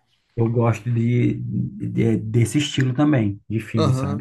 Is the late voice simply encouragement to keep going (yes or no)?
no